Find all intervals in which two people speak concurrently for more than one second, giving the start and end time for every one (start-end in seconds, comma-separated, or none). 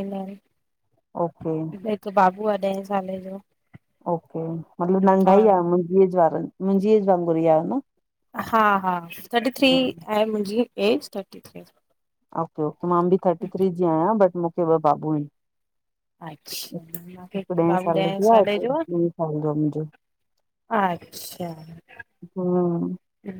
16.7-18.8